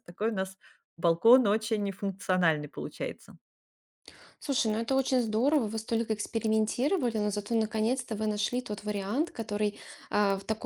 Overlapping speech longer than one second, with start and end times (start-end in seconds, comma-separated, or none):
none